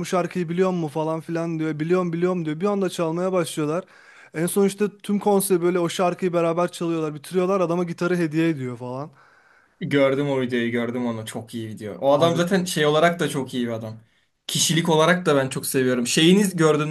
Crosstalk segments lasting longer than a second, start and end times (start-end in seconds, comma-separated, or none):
none